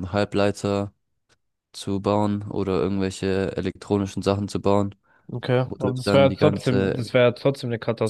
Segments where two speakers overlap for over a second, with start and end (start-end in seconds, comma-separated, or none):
5.7-7.1